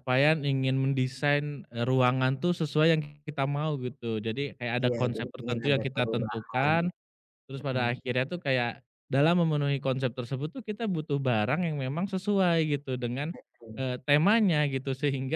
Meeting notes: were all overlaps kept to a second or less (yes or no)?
no